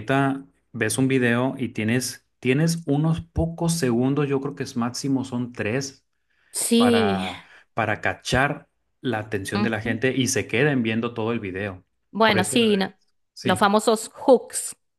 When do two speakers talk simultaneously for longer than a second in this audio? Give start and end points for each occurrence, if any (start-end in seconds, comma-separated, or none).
none